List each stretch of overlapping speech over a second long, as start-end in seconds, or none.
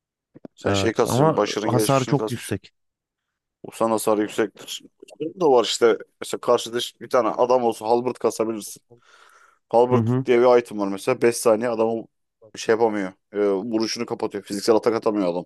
0.6-2.5